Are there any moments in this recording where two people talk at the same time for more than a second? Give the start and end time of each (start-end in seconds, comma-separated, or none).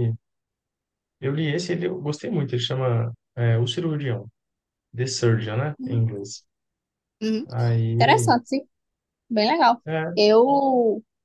none